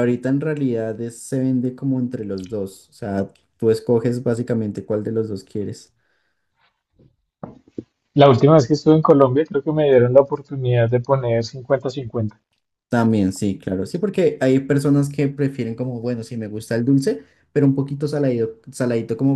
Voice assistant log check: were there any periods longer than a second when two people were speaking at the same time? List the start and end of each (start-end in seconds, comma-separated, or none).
none